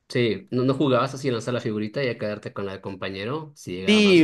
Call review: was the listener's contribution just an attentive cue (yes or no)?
no